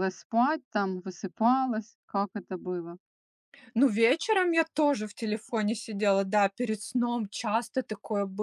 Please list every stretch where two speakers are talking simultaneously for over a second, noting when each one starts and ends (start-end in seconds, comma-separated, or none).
none